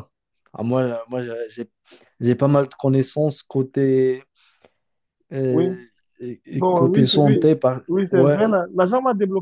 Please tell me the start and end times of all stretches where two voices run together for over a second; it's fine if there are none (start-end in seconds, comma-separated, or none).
6.5-8.4